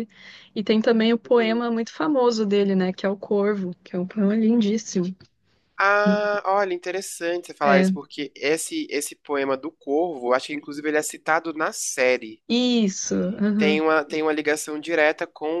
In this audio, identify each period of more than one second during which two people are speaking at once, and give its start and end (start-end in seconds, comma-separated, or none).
none